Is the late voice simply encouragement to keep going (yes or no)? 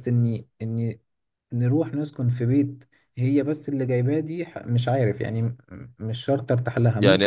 no